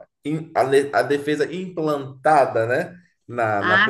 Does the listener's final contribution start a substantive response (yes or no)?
yes